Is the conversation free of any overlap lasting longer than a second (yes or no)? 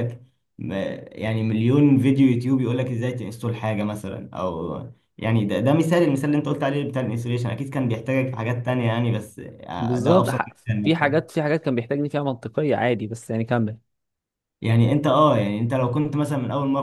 no